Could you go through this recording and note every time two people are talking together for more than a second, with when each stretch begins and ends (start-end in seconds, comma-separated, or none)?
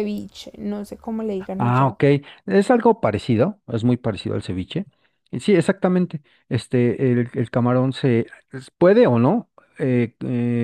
none